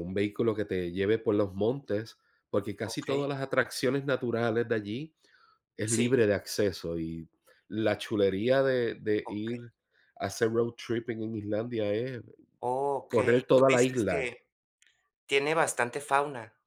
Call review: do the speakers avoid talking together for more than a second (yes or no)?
no